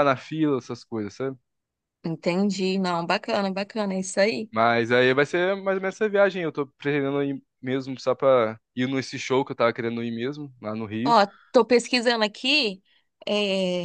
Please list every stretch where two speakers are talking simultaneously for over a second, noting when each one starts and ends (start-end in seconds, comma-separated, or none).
none